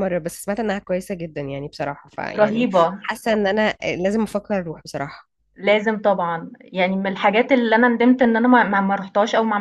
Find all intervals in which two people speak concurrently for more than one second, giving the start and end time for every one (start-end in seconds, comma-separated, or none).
none